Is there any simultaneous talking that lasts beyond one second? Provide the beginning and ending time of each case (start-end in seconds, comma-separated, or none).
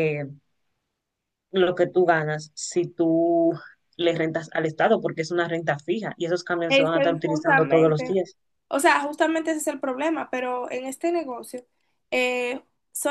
6.7-8.1